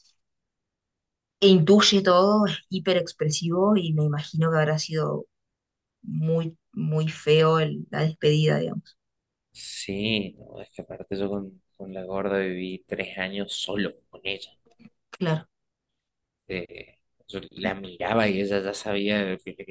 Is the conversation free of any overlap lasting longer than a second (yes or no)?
yes